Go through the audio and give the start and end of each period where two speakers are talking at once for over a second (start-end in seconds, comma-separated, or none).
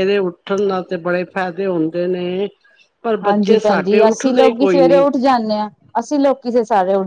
3.2-5.0